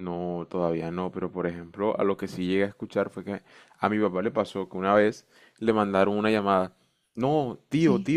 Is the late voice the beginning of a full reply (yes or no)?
no